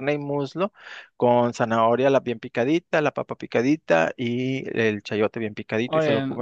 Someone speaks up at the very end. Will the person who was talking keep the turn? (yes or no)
yes